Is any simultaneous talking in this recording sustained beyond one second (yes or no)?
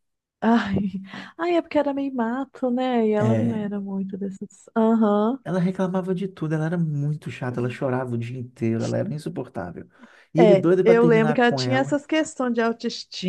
yes